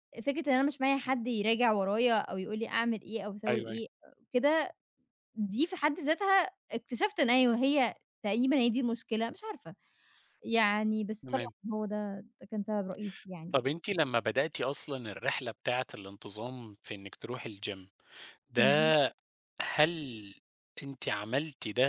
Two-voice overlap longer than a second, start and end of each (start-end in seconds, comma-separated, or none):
none